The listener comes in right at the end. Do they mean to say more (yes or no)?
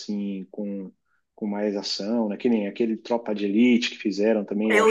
yes